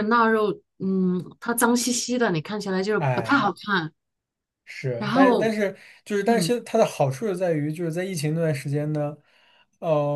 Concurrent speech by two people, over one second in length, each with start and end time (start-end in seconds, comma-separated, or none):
none